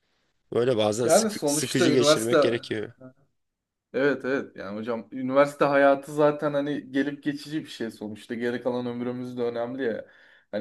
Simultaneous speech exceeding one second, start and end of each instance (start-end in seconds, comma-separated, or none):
1.0-2.6